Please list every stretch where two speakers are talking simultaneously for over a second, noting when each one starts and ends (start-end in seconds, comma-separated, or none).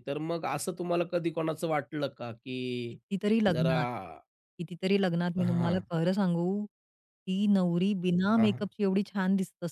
none